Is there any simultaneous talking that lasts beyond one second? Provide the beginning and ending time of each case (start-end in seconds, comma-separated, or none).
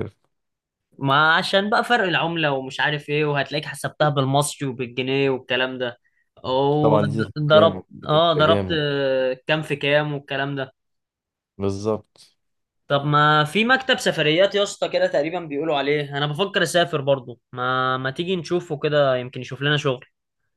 6.8-8.8